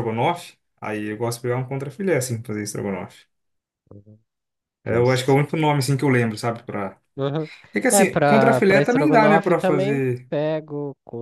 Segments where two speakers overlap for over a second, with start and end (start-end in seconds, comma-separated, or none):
7.9-10.3